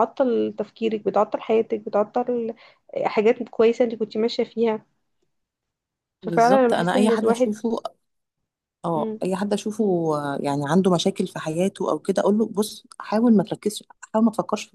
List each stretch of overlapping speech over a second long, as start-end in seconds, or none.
6.2-7.5